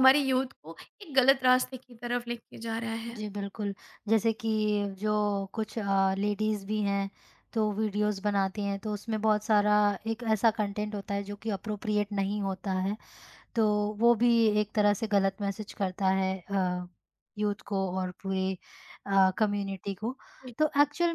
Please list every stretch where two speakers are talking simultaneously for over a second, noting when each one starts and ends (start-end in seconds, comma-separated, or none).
none